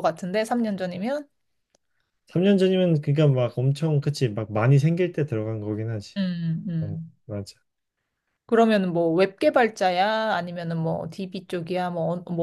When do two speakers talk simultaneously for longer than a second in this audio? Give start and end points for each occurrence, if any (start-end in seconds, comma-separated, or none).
none